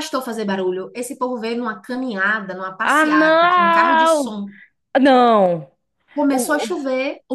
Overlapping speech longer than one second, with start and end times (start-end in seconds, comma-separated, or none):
2.8-4.3